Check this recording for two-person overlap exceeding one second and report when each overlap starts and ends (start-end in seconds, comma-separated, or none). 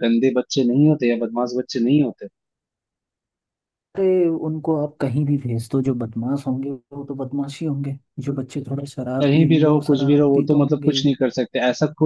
9.2-11.1